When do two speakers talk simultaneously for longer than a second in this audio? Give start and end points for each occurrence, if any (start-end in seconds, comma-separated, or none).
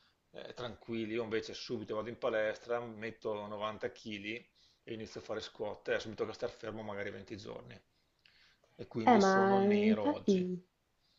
9.0-10.5